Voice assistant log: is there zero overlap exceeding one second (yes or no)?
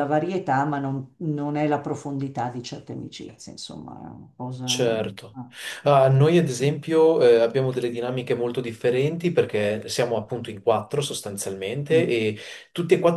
yes